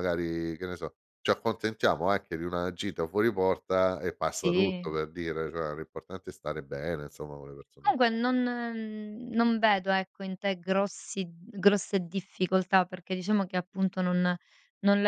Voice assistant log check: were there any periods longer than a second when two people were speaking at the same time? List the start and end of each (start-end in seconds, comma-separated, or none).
none